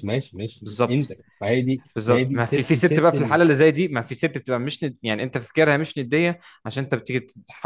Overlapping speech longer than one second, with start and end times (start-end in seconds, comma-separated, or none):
1.9-3.4